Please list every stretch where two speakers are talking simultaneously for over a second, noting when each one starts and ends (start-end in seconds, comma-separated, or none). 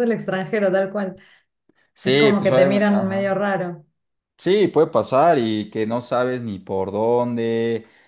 2.0-3.4